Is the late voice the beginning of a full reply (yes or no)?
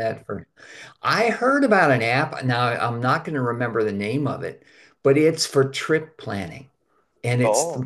no